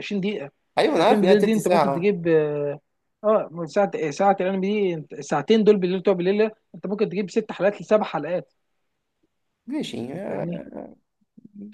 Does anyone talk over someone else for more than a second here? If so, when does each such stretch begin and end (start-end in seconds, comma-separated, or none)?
0.9-2.2